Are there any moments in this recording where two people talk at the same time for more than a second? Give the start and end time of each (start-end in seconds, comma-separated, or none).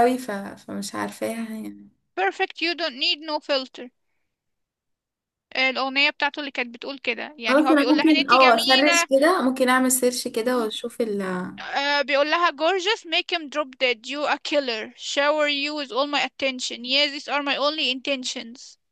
7.5-9.1